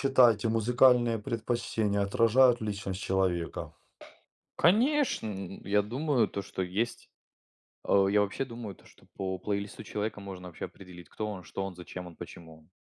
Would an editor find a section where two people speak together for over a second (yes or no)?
no